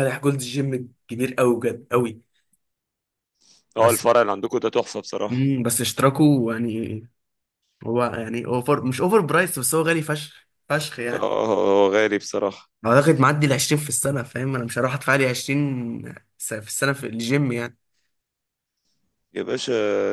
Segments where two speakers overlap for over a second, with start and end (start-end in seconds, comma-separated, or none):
none